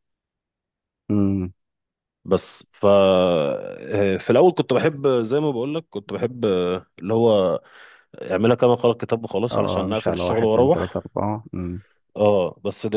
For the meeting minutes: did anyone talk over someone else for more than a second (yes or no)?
yes